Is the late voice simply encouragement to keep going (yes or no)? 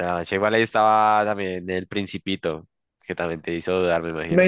no